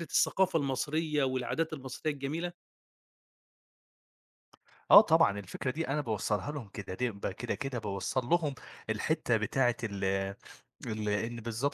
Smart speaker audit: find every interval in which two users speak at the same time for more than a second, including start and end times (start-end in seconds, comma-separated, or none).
none